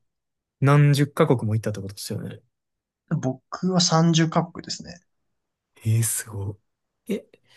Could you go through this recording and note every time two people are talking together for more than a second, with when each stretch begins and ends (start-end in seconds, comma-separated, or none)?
none